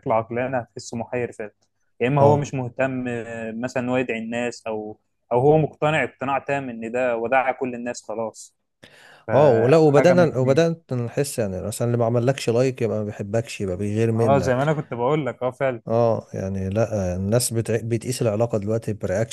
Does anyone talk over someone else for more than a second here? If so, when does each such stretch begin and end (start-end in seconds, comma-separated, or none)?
9.3-10.7